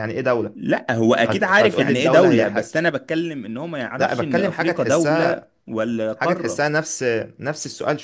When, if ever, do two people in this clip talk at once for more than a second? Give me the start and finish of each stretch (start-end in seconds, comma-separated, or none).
1.2-2.8, 4.0-5.4